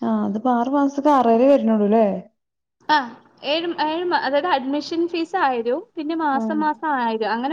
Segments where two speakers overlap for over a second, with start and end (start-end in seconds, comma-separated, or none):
none